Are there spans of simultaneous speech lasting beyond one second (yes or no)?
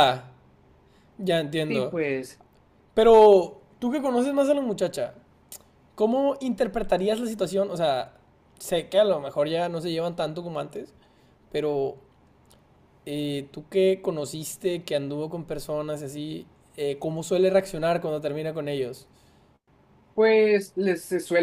no